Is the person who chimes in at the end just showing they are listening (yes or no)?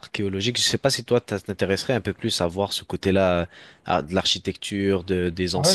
no